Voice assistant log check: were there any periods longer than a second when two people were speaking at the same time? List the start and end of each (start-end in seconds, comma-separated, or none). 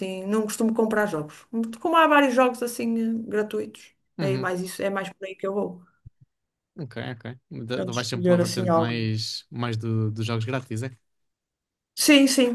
7.8-9.1